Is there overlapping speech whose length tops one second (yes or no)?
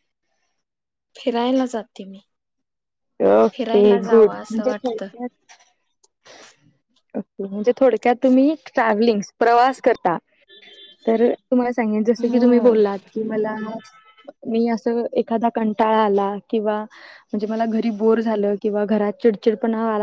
yes